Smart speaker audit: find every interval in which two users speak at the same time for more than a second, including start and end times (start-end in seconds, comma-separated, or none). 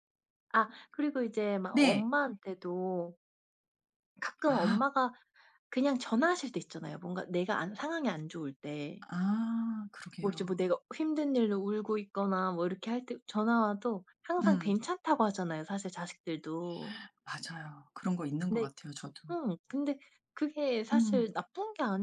none